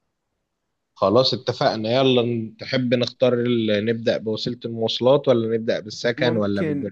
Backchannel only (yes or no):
no